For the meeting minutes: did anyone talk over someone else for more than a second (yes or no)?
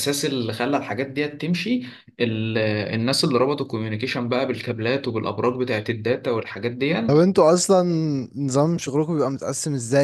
no